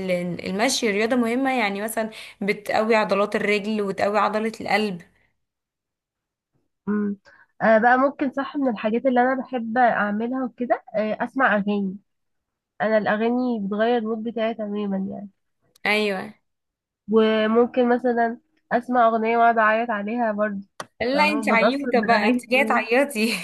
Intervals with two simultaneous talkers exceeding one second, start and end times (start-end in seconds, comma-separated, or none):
21.1-22.9